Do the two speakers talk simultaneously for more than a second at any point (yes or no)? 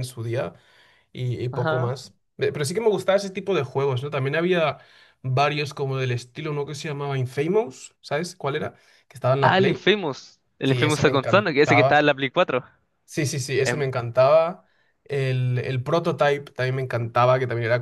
yes